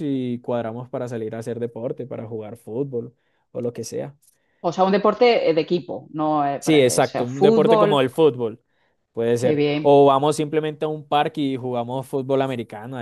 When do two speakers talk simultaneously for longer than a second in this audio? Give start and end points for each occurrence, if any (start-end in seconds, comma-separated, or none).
6.6-8.0